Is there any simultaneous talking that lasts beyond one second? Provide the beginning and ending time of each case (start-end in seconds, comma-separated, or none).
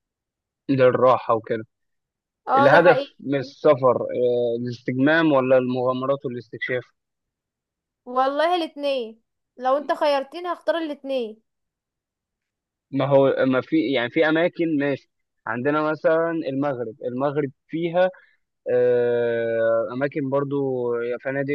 none